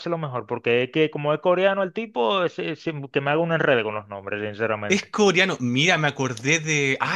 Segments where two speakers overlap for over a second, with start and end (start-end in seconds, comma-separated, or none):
none